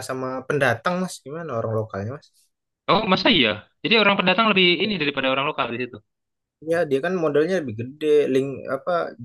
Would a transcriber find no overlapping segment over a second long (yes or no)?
yes